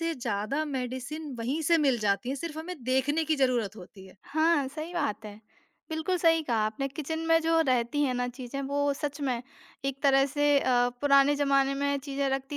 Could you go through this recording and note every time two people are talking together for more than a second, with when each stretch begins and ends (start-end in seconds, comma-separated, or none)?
none